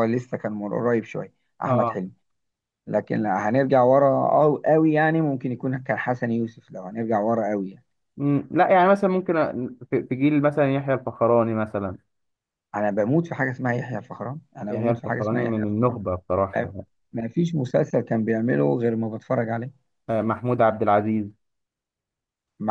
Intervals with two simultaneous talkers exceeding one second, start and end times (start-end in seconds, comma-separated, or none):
14.7-16.0